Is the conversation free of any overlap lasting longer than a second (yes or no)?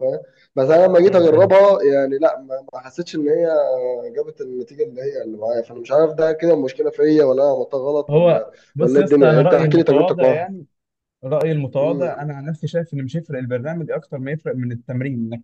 no